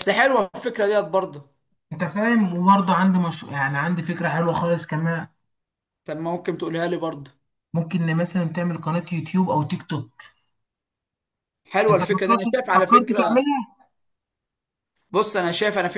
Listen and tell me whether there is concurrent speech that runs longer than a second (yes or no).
yes